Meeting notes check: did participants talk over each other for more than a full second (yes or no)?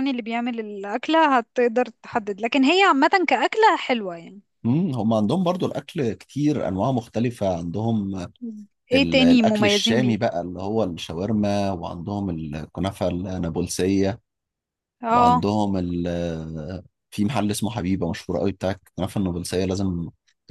yes